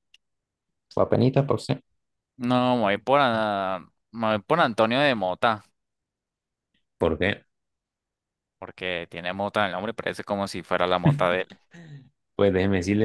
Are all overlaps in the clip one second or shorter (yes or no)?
yes